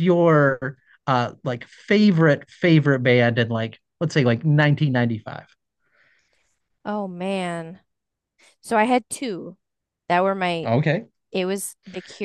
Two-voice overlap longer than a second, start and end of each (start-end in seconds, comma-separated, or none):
none